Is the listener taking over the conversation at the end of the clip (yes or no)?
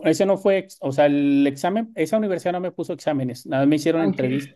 no